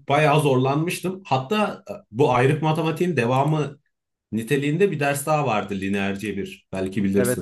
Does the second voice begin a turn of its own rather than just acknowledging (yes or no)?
yes